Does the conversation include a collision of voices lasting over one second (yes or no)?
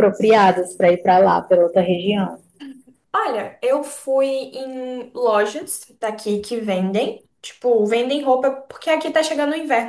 no